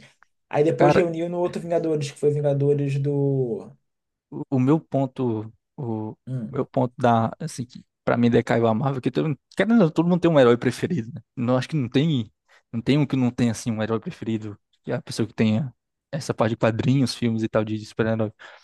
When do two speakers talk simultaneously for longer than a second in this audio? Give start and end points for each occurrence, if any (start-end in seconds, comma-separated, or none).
none